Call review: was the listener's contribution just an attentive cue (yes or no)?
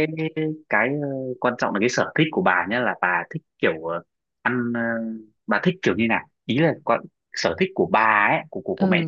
no